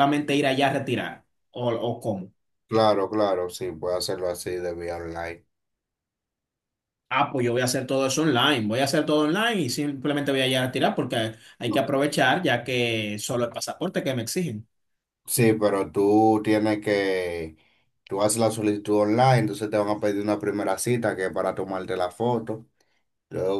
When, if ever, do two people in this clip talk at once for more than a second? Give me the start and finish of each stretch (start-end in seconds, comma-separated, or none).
none